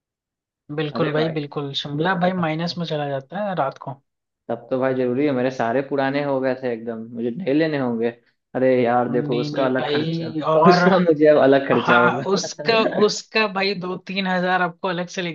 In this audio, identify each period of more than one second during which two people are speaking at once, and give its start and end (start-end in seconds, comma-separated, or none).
9.1-10.8